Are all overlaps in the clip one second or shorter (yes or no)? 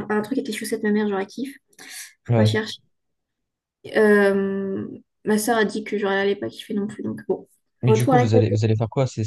yes